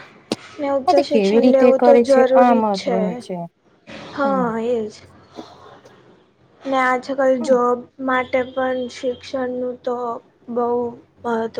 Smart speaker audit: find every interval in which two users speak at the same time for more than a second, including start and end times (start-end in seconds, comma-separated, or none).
0.9-3.0